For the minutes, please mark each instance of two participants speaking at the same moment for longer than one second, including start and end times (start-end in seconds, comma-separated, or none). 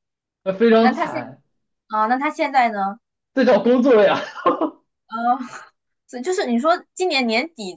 none